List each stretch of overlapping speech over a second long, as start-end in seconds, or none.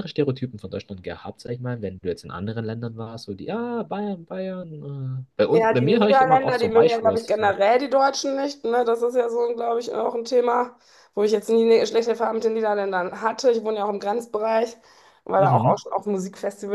5.5-7.6